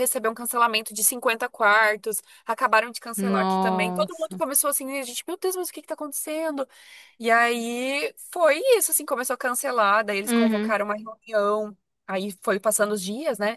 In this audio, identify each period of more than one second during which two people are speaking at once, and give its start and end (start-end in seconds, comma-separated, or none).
3.2-4.4